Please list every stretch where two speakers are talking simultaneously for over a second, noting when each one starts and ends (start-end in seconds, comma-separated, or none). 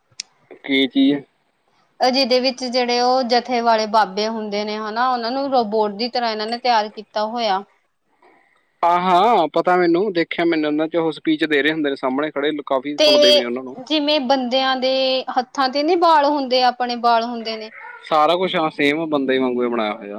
none